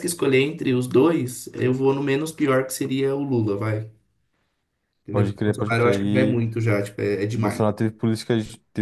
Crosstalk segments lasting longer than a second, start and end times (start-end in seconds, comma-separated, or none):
5.1-6.4